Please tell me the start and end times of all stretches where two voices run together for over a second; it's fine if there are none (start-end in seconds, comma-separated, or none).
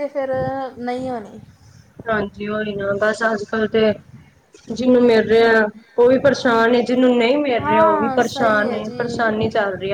7.6-9.3